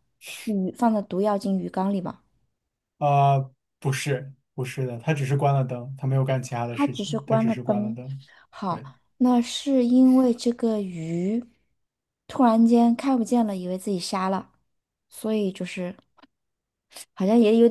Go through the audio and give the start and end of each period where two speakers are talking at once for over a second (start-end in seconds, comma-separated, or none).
6.7-8.0